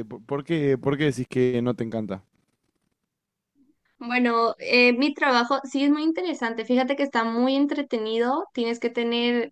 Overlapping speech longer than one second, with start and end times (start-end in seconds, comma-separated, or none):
none